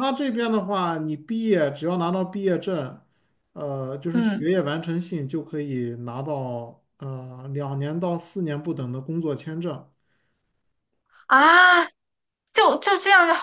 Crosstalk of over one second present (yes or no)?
no